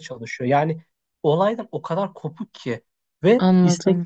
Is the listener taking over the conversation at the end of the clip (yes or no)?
no